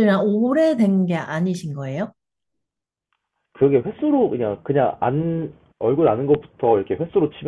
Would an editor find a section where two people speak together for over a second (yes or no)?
no